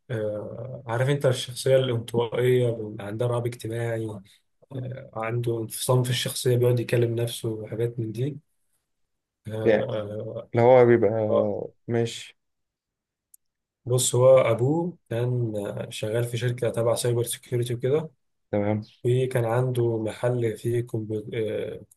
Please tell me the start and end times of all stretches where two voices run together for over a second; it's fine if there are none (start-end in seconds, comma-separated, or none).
none